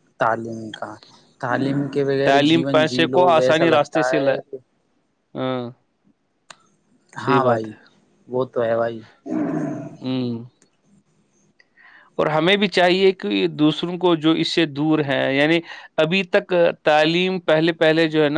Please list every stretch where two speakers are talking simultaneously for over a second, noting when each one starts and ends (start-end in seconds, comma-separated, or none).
2.2-4.3